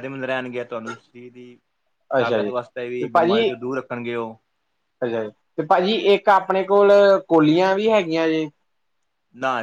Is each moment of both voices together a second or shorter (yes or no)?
no